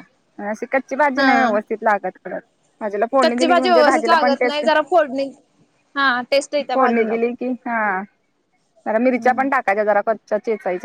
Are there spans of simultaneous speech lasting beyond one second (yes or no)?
yes